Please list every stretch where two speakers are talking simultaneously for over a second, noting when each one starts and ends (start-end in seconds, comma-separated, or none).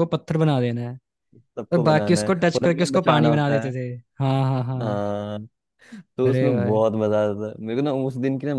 1.7-3.7